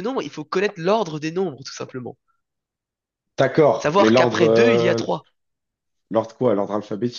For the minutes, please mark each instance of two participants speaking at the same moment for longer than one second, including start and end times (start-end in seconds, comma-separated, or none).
3.8-5.0